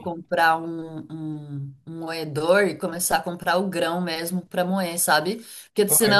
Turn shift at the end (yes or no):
no